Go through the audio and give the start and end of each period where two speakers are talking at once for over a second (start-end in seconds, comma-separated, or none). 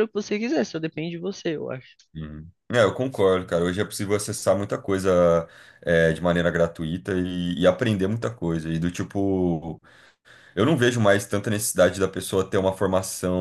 none